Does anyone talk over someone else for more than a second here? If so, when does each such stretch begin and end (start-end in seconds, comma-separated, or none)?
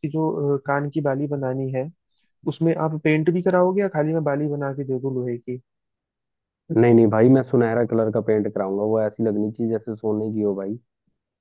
none